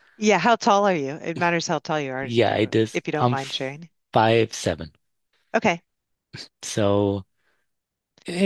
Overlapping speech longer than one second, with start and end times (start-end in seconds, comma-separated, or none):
2.2-3.7